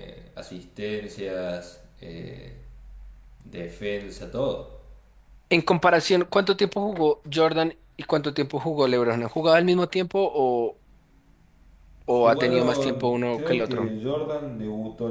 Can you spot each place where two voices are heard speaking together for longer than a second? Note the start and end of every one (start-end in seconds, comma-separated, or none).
12.1-13.9